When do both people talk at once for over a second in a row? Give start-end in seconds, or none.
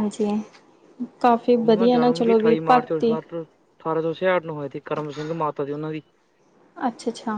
1.6-3.1